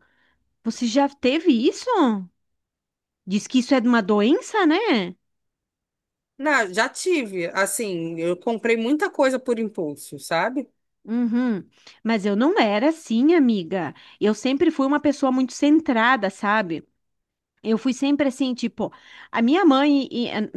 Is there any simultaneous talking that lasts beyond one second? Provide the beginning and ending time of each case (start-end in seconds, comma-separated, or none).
none